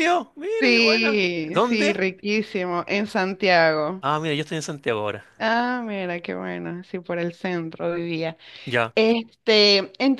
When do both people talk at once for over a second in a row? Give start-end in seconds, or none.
0.6-2.0